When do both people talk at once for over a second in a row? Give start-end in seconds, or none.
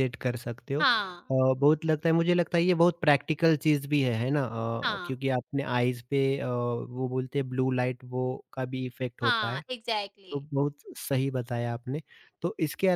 none